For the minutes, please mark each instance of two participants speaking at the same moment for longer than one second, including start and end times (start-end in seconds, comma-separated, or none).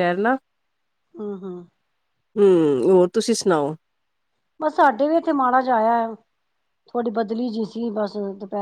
none